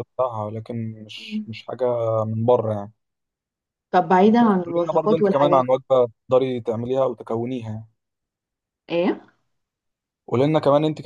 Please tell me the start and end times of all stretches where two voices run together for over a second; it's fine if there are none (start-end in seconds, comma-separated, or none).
4.4-5.7